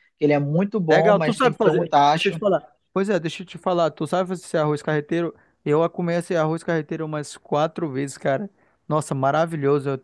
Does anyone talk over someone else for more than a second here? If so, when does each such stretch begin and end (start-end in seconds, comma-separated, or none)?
0.9-2.4